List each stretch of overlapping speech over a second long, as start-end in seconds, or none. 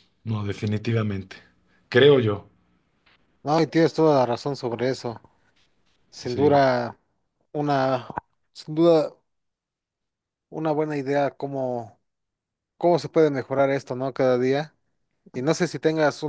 none